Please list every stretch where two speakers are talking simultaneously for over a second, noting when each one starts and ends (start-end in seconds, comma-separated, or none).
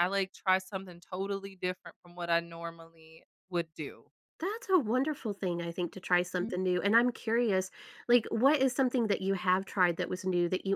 none